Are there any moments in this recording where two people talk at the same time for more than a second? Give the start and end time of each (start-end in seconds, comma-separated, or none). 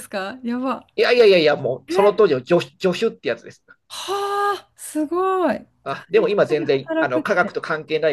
5.8-7.6